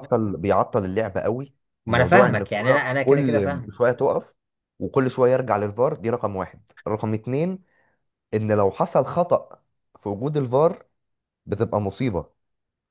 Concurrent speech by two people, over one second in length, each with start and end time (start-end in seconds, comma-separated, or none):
1.9-3.8